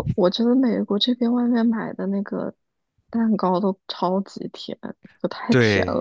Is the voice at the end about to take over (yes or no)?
yes